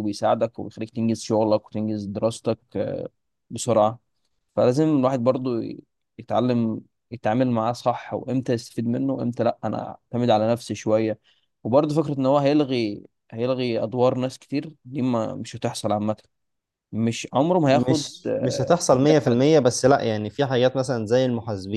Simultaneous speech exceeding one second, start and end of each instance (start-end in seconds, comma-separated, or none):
17.6-19.5